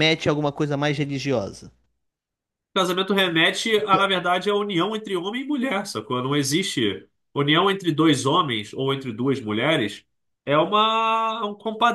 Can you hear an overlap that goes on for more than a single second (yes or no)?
no